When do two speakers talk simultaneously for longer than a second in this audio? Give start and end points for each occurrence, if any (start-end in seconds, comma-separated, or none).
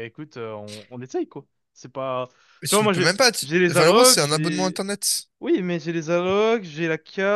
2.7-4.8